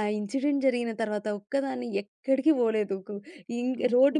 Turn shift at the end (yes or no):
no